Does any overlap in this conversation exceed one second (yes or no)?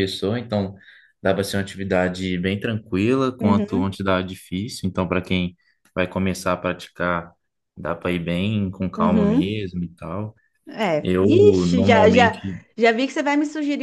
yes